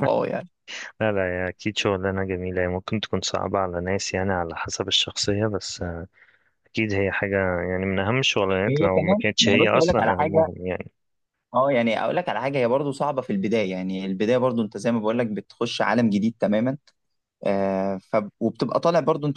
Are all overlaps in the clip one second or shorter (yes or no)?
no